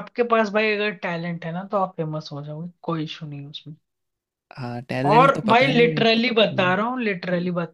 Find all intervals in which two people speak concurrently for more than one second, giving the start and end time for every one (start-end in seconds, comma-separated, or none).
5.1-6.8